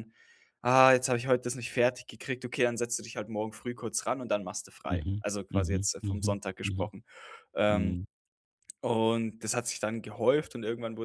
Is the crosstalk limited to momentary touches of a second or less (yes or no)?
no